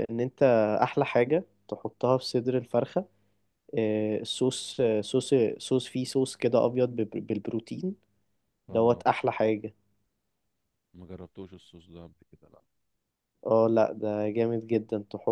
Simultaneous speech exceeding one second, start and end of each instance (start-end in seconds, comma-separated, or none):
none